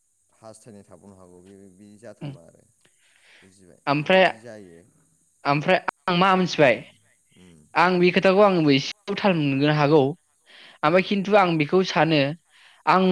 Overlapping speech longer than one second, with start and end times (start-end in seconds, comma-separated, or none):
none